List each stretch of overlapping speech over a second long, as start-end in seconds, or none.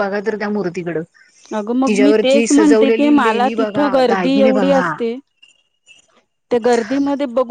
3.2-4.9